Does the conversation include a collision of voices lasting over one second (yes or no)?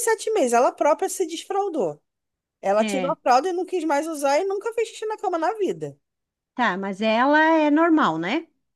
no